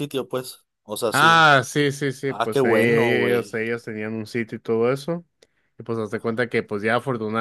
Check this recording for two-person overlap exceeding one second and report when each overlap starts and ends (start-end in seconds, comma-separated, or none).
2.3-3.6